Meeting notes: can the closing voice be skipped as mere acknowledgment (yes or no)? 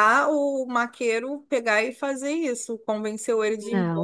no